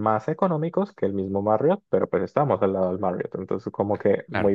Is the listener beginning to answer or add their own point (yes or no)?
yes